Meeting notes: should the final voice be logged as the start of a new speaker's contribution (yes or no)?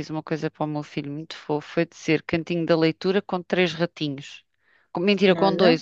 no